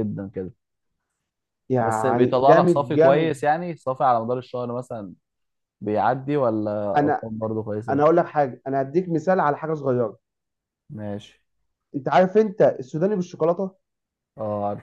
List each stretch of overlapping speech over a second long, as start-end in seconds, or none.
1.8-3.4